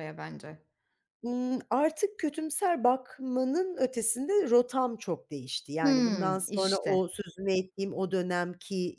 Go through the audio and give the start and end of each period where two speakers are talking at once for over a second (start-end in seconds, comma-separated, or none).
5.8-7.0